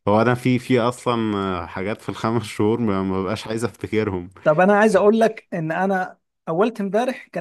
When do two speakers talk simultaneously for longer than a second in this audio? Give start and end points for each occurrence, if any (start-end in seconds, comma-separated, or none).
none